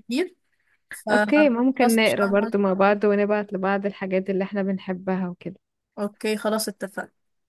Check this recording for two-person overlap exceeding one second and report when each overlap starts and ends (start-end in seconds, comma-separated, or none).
1.1-2.5